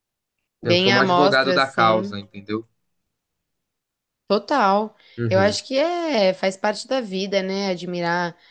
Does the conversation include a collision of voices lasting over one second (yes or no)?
yes